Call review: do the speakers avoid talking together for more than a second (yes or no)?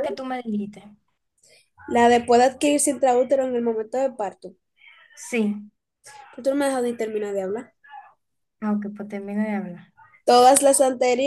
yes